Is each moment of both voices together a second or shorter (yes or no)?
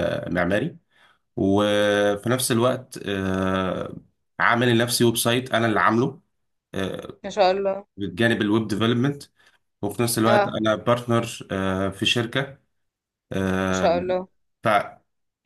yes